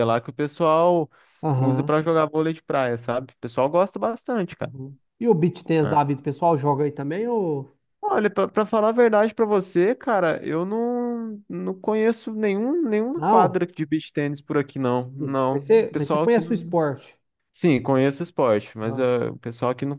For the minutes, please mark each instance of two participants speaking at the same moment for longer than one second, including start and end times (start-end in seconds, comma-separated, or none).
15.2-16.7